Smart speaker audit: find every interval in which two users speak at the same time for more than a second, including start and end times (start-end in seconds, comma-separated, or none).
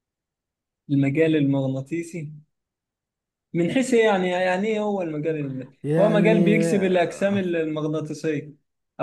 5.8-7.4